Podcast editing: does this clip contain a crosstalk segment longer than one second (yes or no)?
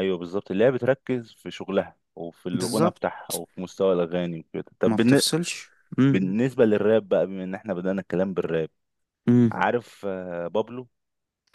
no